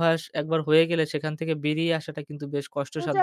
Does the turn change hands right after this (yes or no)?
yes